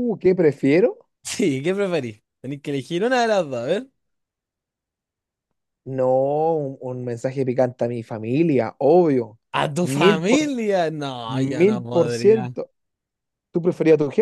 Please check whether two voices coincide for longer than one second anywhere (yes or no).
yes